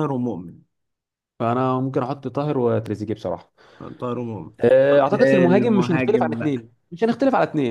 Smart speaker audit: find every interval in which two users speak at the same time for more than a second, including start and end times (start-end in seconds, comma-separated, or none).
4.9-6.7